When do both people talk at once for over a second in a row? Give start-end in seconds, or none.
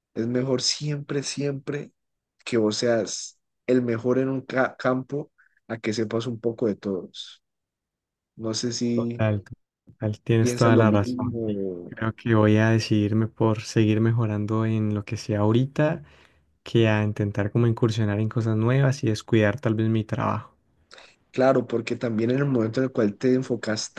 10.4-11.9